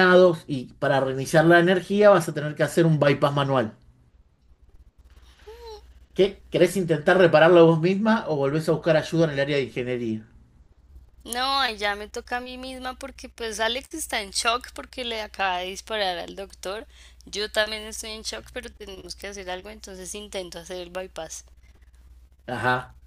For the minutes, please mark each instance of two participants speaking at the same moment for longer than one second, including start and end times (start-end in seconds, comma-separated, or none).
none